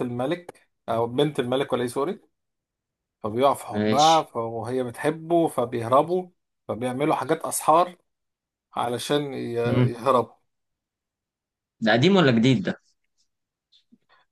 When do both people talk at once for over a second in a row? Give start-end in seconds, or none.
none